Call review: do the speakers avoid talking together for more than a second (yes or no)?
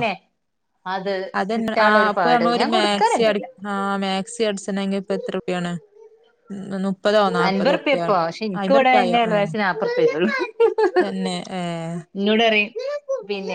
no